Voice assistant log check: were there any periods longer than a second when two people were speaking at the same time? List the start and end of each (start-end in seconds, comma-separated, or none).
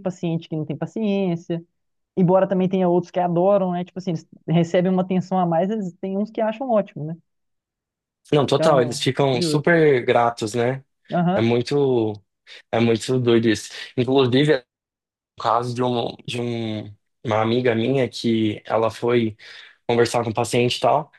8.5-9.8